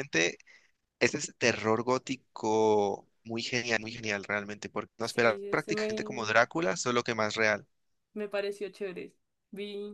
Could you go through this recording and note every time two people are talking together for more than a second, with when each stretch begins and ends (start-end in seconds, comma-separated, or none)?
5.0-6.4